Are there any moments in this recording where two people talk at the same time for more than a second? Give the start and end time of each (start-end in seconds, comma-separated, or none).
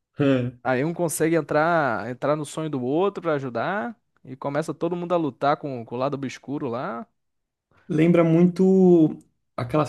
none